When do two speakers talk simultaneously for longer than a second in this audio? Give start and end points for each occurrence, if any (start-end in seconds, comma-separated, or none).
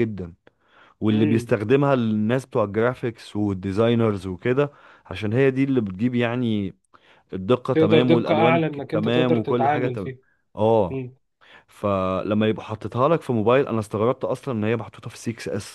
7.7-10.1